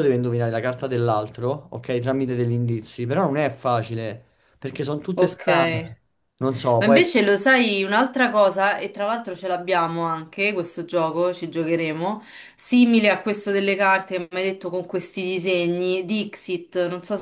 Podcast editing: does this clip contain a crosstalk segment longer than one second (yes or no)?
no